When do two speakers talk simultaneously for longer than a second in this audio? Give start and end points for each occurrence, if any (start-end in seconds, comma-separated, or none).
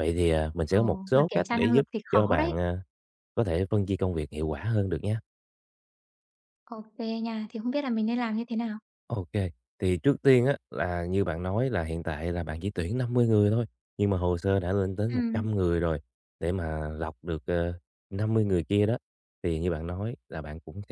0.7-2.5